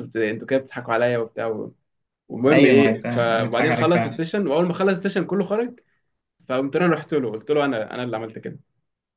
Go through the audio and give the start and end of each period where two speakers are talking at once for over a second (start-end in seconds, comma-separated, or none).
2.5-4.2